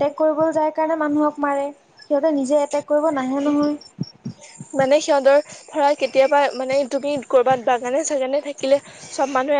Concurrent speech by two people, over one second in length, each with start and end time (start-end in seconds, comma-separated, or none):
none